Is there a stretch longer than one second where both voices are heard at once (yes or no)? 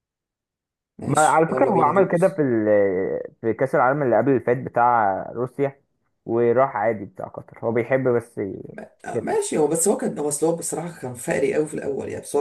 yes